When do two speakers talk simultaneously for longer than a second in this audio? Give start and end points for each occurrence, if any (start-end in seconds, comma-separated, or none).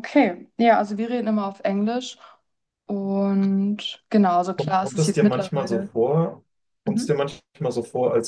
4.5-5.9